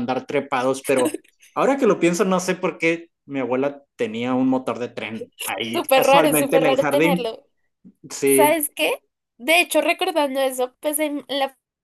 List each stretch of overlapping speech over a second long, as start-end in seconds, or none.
5.7-7.3